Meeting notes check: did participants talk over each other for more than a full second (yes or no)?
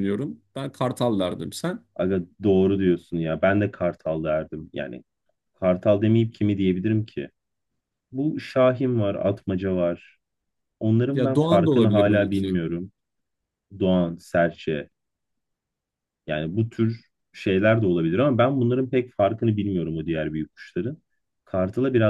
yes